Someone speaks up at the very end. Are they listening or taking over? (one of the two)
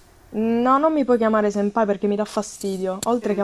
listening